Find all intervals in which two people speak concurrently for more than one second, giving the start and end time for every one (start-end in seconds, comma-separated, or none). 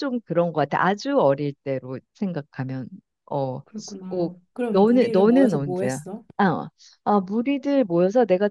4.1-6.2